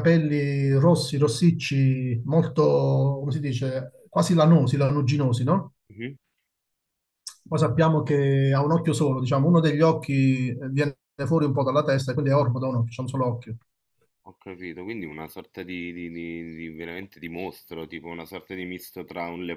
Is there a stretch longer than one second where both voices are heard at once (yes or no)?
no